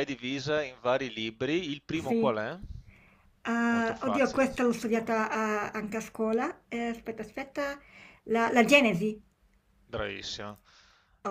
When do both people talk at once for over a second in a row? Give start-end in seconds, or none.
3.7-5.4